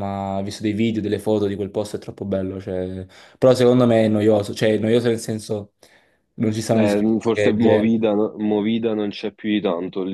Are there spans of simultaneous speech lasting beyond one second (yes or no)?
yes